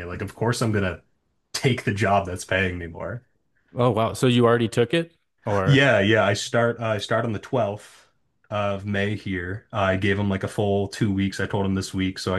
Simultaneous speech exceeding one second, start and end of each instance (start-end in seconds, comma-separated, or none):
none